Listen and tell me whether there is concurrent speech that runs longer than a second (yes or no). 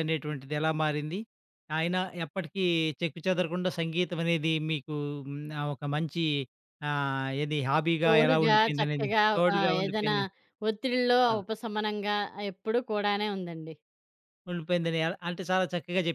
yes